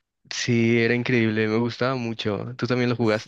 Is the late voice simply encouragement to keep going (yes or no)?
no